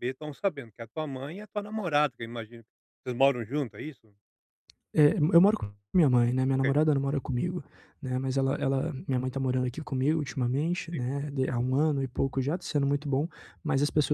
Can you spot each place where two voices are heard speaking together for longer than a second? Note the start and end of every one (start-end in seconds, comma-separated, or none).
none